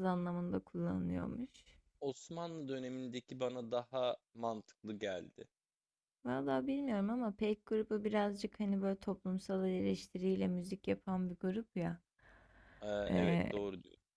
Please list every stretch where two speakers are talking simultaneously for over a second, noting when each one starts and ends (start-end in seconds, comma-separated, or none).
none